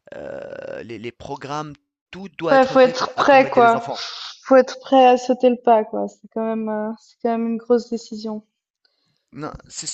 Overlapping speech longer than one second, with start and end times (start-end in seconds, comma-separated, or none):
2.5-3.9